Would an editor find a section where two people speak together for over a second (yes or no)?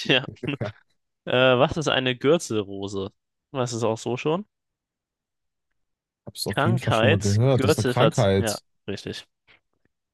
yes